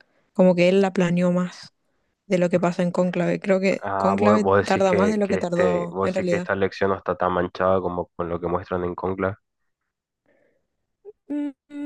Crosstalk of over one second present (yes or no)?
yes